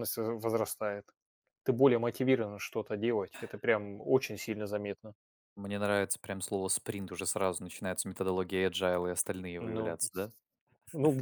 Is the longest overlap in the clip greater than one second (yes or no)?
no